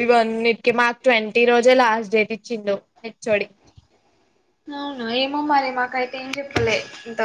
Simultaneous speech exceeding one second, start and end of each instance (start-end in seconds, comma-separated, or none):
none